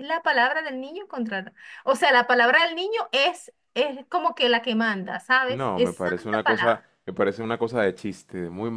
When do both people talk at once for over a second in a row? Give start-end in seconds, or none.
5.5-6.9